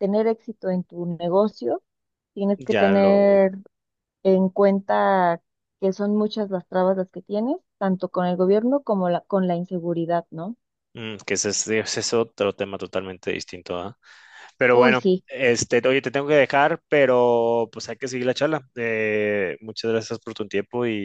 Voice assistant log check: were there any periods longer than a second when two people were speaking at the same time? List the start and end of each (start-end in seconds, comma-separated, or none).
none